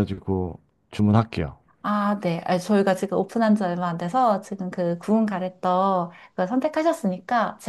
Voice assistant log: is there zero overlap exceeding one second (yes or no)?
yes